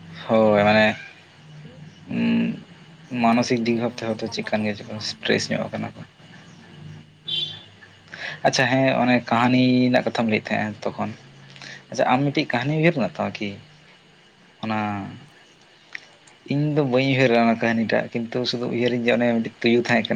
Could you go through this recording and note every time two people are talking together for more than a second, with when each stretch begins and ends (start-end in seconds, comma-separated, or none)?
3.2-5.6